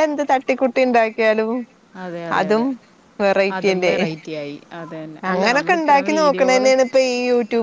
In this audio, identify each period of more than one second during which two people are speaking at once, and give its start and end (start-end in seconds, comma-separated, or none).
5.3-6.7